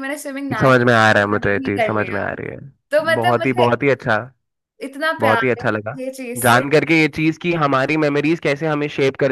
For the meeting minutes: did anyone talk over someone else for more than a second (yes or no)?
yes